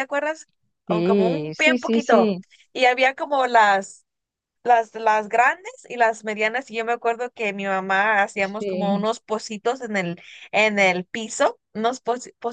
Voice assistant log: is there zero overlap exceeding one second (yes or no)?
no